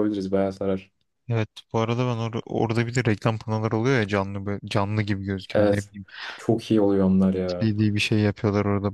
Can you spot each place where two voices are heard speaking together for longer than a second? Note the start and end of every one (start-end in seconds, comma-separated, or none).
none